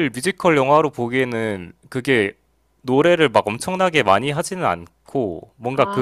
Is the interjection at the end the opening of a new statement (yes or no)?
no